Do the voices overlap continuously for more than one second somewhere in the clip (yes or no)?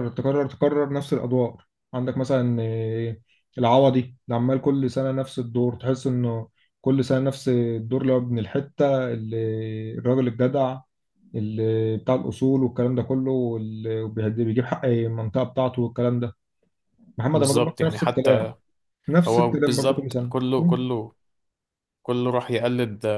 yes